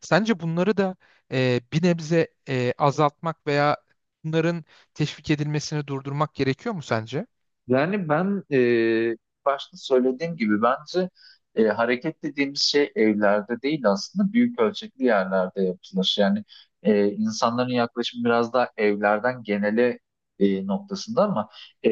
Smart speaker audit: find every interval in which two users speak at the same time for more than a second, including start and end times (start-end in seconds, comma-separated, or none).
none